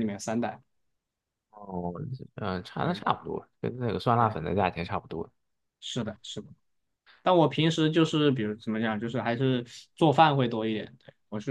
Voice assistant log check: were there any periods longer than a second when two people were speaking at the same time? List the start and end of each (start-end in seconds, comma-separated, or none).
none